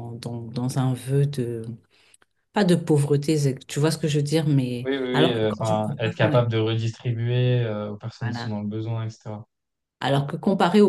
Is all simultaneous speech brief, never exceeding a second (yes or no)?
no